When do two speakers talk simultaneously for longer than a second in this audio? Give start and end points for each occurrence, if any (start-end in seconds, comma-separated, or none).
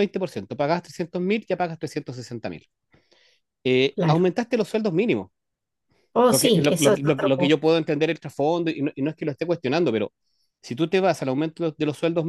6.3-7.5